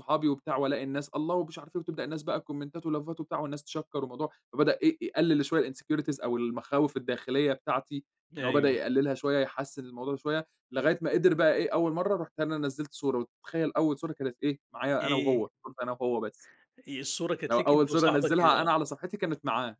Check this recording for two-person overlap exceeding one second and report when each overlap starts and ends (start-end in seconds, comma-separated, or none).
17.5-18.8